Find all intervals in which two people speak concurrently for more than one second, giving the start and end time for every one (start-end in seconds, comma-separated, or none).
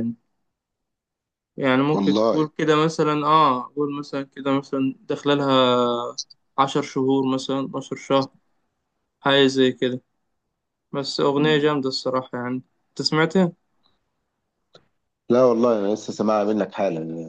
none